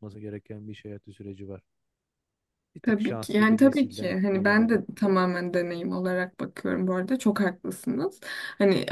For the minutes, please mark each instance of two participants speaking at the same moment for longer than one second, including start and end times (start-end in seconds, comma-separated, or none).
2.8-4.8